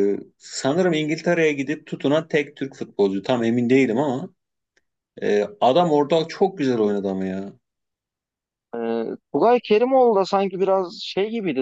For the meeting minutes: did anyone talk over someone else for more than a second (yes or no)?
no